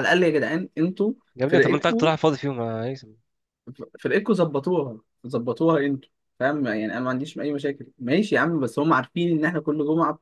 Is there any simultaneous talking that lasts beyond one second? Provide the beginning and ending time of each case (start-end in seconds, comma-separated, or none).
none